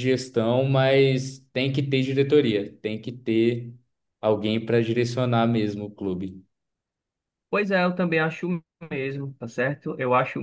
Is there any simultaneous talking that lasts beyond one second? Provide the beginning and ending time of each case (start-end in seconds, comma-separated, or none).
none